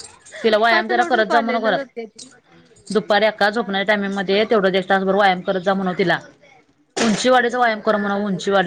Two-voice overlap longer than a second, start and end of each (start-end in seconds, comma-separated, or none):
0.7-1.9